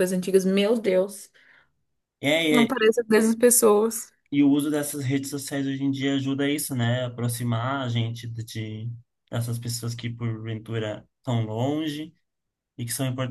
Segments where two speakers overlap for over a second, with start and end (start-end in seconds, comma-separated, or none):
none